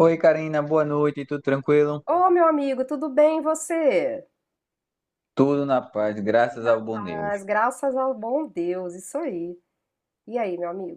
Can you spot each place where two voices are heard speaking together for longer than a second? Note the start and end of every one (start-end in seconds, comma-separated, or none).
none